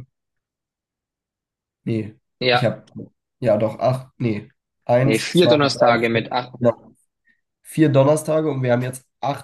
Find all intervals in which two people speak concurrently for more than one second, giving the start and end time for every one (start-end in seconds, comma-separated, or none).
5.0-6.5